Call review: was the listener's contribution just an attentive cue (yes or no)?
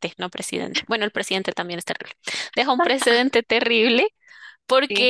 yes